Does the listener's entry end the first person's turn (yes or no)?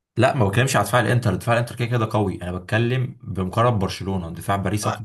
yes